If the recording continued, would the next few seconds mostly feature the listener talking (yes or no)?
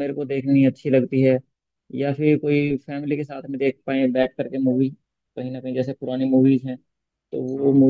no